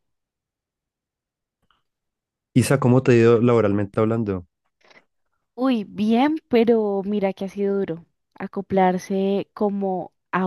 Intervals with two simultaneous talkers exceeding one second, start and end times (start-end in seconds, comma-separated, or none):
none